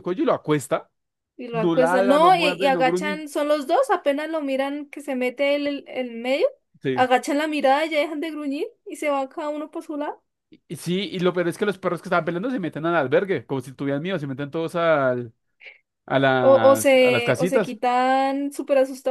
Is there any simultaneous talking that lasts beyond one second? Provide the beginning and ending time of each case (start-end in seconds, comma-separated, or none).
1.5-3.2, 16.4-17.8